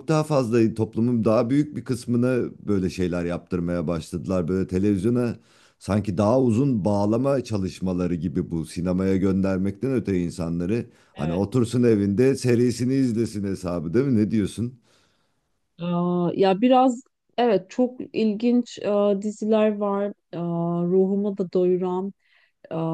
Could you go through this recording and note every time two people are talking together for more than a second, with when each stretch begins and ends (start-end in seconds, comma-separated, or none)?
none